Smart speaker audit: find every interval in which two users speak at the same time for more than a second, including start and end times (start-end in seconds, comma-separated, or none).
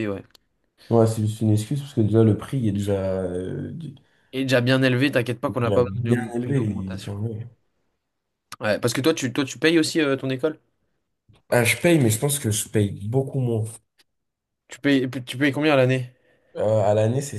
5.5-7.2